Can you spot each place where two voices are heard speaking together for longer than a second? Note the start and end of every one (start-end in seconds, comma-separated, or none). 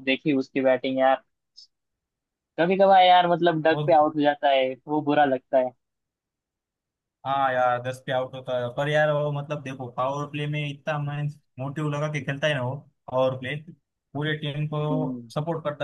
none